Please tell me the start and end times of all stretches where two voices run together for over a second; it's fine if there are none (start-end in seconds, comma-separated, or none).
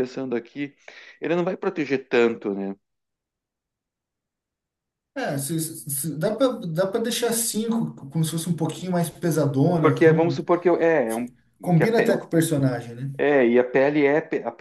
none